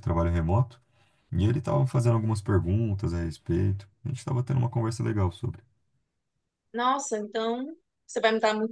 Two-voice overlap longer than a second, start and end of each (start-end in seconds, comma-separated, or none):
none